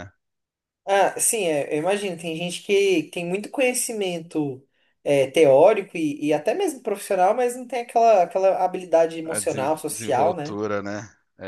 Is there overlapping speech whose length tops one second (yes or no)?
yes